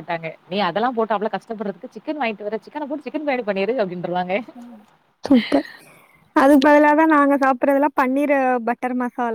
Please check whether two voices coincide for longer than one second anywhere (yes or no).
no